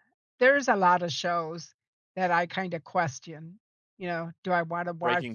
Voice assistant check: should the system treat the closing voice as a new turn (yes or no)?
no